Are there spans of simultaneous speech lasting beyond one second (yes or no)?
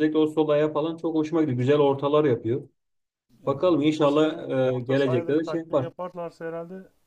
yes